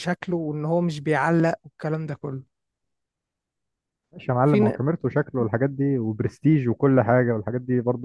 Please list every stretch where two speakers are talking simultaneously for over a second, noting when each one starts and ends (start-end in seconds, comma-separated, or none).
none